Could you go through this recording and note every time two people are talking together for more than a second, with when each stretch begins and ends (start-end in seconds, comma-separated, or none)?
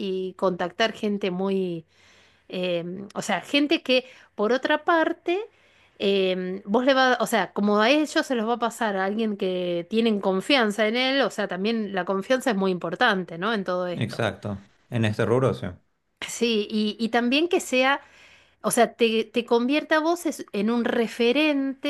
none